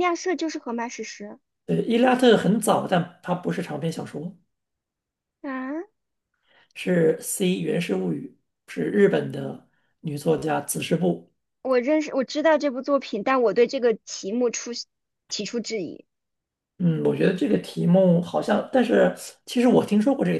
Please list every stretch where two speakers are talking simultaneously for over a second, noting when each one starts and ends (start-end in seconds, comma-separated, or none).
none